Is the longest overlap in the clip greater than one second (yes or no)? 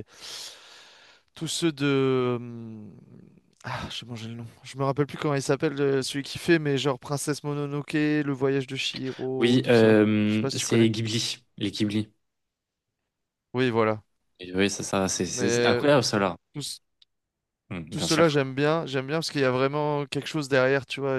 yes